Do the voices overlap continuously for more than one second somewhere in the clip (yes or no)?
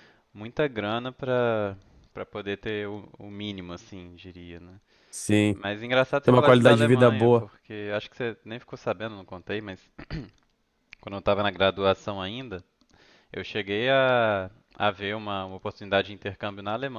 yes